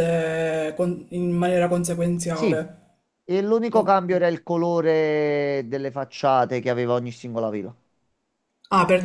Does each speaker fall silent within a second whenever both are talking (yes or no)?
yes